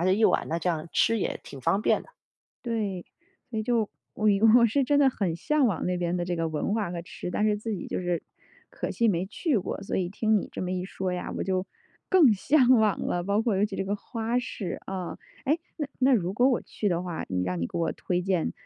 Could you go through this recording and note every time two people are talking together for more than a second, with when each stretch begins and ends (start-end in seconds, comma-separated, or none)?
none